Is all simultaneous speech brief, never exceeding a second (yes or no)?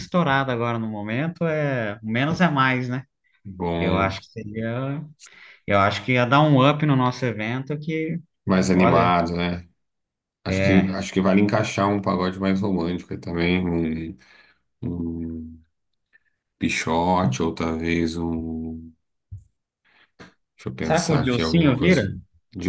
no